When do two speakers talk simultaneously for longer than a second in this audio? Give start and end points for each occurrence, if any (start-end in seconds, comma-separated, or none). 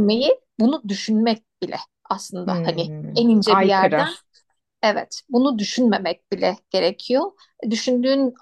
2.4-4.1